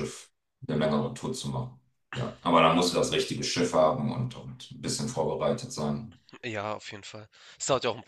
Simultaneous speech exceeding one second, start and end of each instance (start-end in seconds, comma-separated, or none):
none